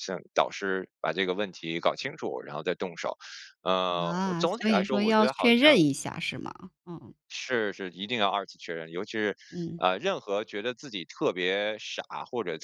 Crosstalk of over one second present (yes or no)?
yes